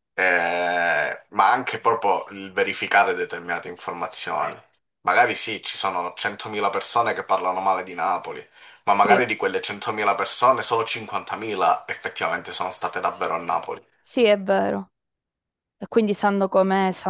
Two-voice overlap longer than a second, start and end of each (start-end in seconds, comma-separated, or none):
none